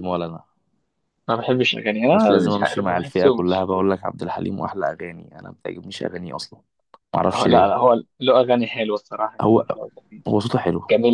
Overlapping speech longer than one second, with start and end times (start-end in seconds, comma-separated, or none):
2.1-3.7